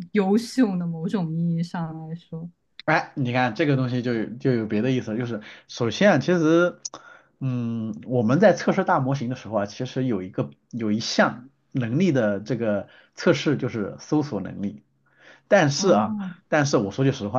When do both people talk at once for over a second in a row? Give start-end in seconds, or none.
none